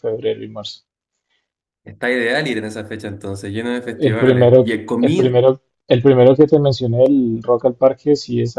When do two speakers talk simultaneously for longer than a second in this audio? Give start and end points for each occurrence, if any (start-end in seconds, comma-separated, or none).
4.0-5.3